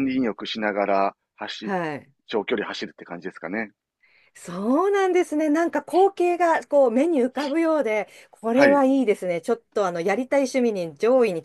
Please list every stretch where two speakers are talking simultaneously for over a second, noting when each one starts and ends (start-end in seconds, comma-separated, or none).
none